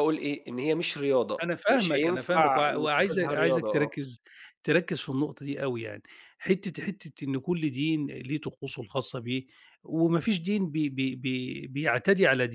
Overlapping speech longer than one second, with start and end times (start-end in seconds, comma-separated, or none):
1.4-3.9